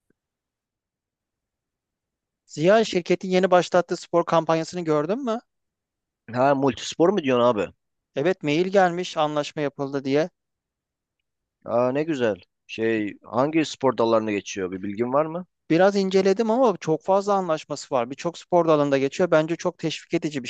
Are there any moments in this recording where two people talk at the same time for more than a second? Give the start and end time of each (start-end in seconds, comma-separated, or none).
none